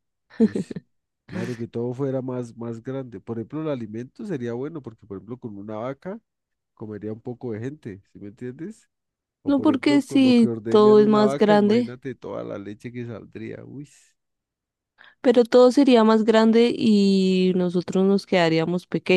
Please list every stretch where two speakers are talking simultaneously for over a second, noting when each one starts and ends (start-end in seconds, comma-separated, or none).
9.4-12.0